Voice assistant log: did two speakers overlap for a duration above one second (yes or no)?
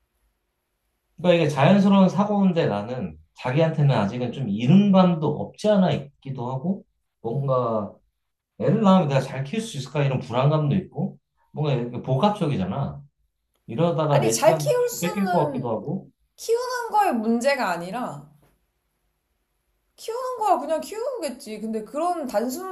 yes